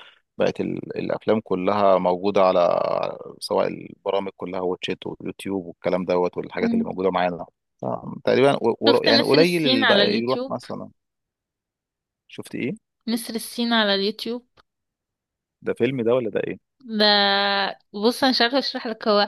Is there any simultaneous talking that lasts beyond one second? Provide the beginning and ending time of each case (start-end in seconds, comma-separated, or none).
8.9-10.5